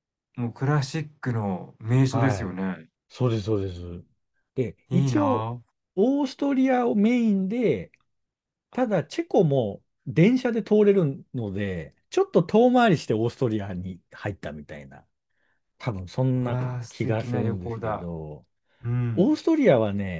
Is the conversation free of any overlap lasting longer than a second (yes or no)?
no